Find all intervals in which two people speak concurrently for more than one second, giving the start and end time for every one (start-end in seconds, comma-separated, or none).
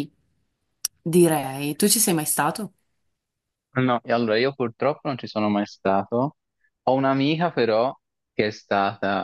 none